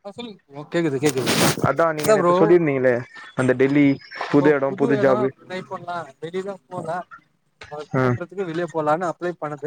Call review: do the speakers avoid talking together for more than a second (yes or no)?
yes